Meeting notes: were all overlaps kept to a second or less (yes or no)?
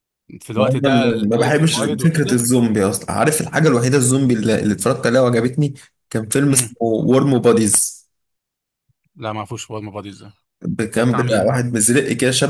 no